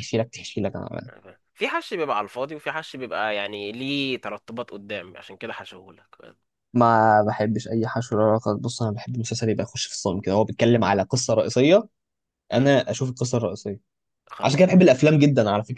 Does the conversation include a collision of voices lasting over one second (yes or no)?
no